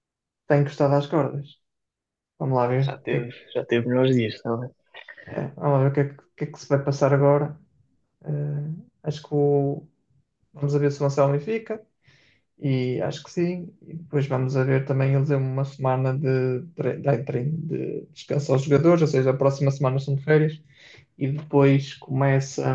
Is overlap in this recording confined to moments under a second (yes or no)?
yes